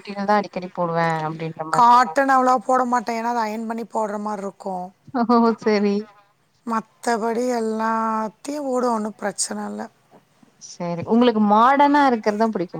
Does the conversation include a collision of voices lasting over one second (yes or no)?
no